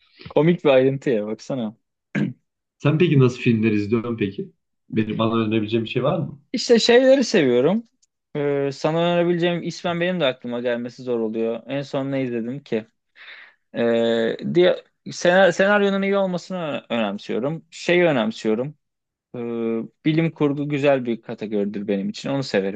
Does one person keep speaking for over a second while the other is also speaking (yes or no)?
no